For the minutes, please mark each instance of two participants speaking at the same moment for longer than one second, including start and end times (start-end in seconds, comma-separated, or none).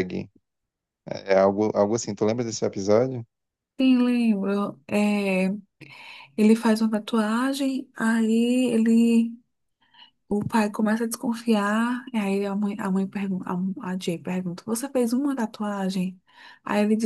none